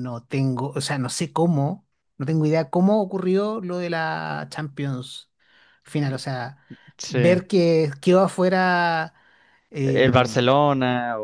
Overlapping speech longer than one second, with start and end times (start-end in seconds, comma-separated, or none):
none